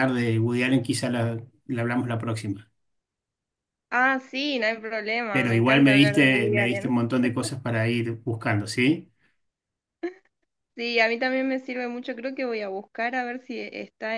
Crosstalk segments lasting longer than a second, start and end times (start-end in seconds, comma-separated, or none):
5.3-7.0